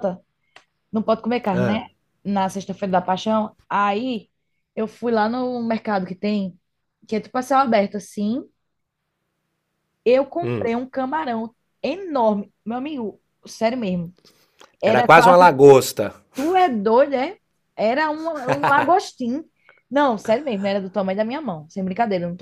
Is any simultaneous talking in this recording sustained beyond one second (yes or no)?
no